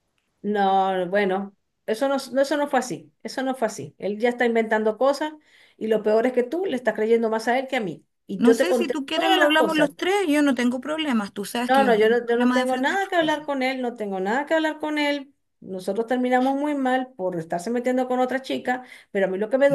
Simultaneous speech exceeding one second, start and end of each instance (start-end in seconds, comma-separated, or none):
8.4-9.9, 11.7-13.5